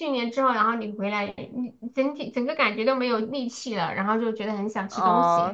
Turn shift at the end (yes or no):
yes